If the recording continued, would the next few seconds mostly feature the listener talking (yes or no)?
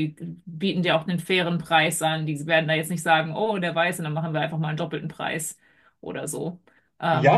yes